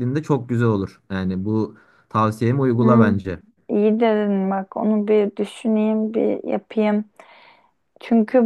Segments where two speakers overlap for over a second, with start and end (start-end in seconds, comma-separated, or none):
none